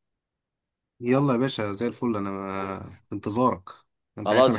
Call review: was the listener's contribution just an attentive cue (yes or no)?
no